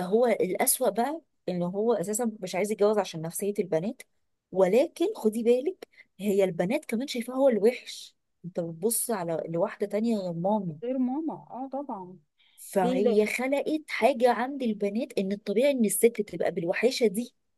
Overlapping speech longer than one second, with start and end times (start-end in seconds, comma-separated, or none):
none